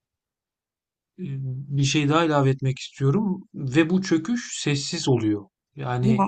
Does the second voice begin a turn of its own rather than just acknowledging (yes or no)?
no